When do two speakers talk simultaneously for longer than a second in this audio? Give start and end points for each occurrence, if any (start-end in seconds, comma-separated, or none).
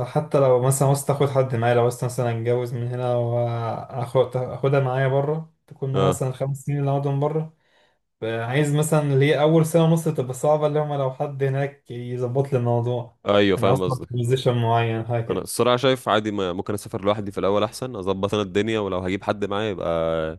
none